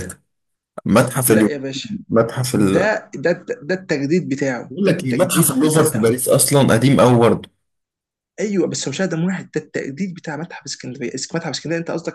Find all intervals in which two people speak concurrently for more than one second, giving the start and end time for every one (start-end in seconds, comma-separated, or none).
4.7-6.2